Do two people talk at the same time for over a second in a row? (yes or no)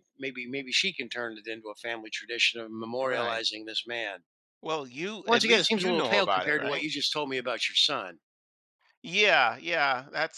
yes